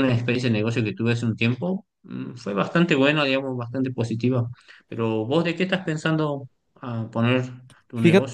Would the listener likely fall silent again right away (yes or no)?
no